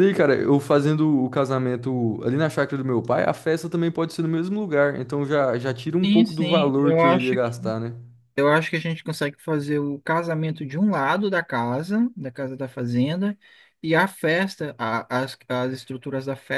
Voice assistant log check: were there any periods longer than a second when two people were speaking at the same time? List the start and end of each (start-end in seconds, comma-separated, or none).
6.0-7.5